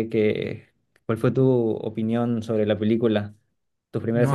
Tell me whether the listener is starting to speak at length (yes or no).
yes